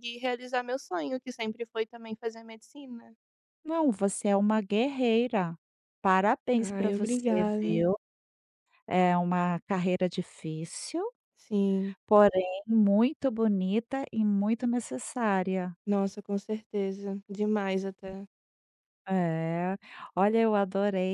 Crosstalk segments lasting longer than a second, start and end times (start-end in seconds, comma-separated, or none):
6.6-7.9